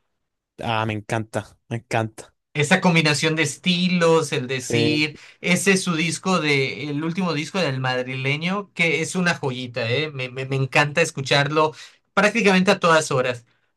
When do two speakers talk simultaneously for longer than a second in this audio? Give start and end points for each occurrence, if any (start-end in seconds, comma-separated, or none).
none